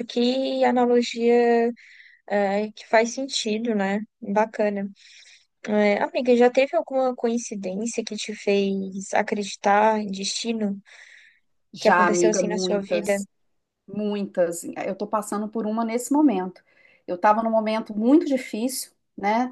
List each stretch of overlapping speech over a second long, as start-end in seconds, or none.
11.8-13.2